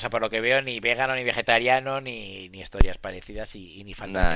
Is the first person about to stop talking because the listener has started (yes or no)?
no